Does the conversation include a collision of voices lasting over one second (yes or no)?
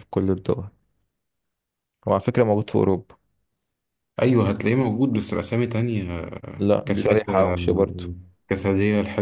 yes